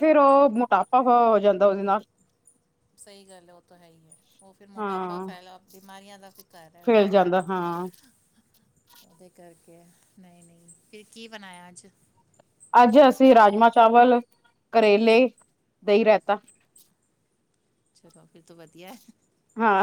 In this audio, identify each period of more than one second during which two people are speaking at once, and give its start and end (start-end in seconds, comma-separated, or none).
none